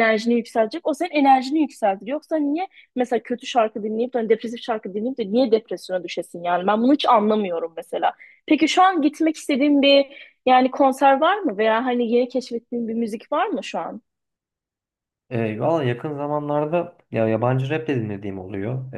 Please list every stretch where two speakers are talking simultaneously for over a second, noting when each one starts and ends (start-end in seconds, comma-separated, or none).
none